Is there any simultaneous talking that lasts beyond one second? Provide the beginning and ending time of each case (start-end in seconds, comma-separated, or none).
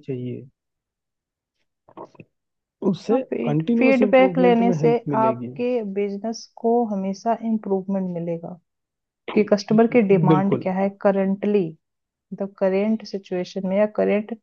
3.1-5.5